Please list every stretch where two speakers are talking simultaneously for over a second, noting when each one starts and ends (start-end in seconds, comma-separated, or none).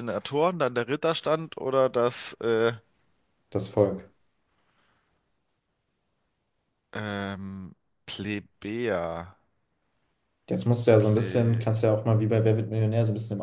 none